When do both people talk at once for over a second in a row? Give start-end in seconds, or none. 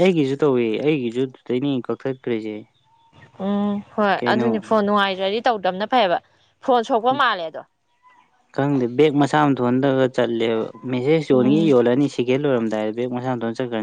none